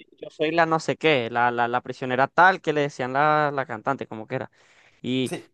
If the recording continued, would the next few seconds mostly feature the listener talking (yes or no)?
no